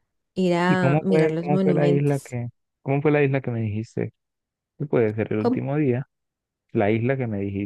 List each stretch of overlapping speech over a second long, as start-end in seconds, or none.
0.6-2.4